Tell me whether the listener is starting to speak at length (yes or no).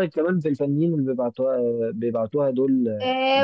yes